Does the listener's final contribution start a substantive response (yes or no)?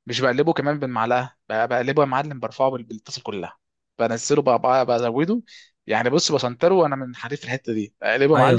yes